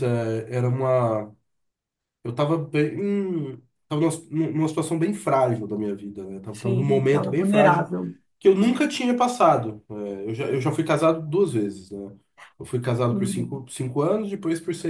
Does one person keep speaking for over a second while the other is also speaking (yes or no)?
yes